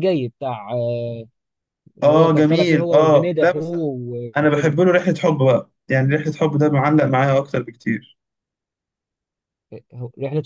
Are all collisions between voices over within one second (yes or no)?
no